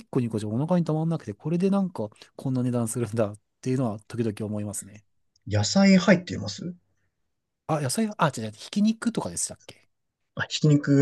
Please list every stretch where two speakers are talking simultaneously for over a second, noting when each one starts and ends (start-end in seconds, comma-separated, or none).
none